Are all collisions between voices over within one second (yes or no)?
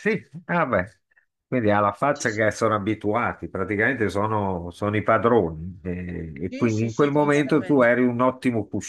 no